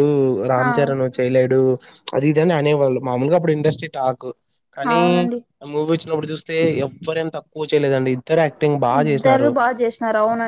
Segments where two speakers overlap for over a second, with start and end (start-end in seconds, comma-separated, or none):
none